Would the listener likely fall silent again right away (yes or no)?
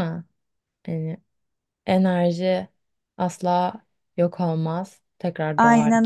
no